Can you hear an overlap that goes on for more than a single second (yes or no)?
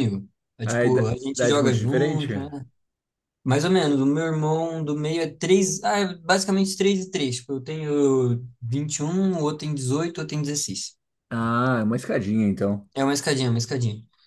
yes